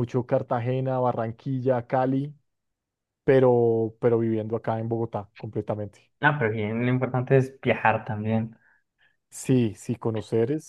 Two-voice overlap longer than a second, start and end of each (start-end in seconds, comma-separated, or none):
none